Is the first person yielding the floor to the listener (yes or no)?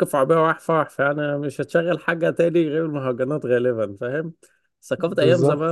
no